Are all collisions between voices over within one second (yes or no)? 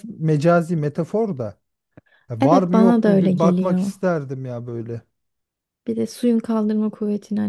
no